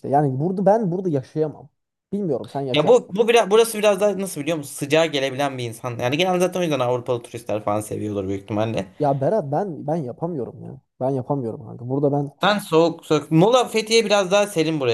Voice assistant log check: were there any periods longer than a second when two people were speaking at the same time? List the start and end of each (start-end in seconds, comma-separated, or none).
none